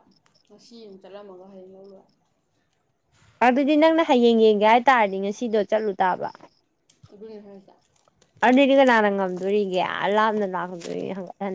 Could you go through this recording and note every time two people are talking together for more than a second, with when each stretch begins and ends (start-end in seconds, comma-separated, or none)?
none